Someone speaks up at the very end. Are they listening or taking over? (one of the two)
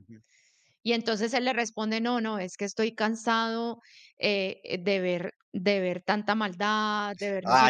taking over